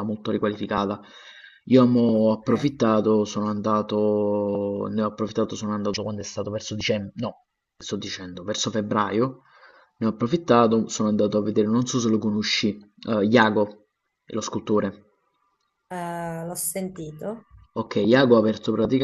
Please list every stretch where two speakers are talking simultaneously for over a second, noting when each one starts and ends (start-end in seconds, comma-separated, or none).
none